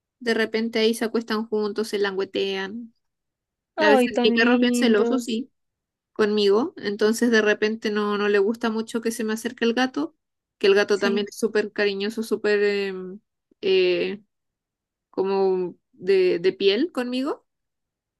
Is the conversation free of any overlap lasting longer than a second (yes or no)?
no